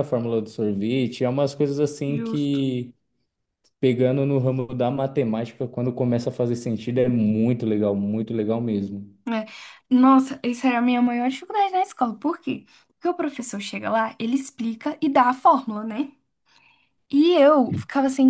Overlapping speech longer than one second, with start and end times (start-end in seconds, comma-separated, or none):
none